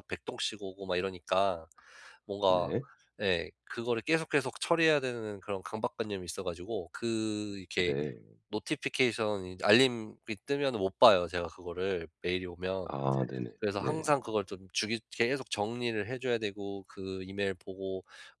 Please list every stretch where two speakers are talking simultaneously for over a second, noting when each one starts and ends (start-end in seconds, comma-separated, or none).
none